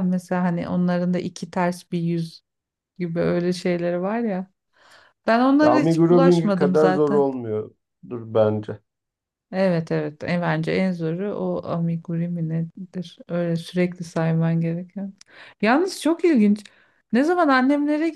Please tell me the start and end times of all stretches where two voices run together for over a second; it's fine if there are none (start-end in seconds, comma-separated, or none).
5.6-7.2